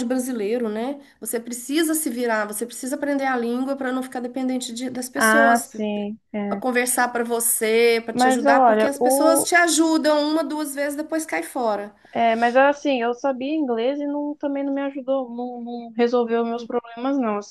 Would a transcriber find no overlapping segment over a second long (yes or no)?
no